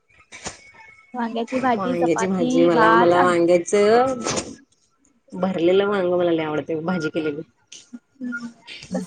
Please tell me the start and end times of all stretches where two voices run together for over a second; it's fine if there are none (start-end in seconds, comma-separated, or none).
1.7-3.4